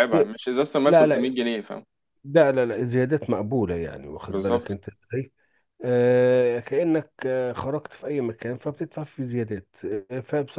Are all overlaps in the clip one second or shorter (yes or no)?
yes